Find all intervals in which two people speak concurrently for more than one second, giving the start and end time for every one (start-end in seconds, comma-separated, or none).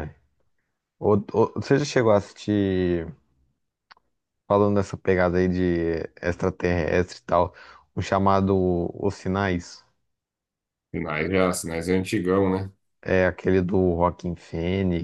none